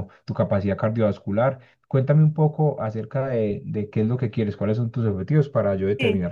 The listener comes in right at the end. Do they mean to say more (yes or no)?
yes